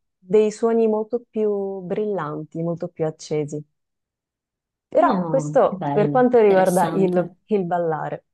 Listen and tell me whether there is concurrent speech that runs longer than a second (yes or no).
yes